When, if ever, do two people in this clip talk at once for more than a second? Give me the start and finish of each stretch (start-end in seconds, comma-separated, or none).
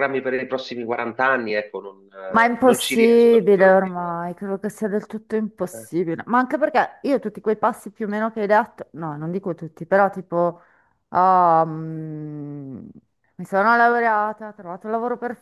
2.3-4.2